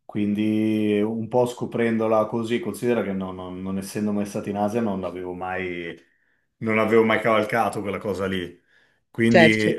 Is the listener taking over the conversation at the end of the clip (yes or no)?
no